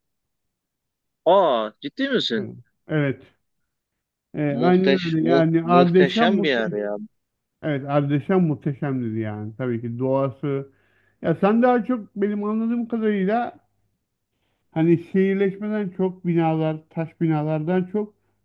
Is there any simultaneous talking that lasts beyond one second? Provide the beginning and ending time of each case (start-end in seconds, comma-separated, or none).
4.5-6.8